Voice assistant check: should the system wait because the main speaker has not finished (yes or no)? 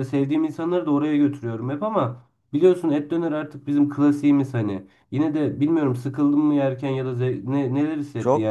no